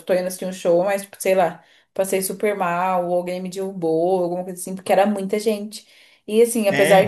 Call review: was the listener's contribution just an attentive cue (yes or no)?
yes